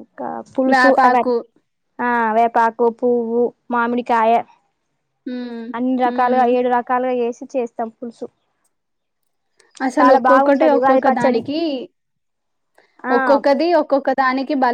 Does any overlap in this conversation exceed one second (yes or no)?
yes